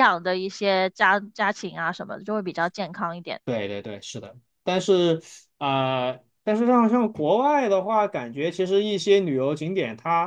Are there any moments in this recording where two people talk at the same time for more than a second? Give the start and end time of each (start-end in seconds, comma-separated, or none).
none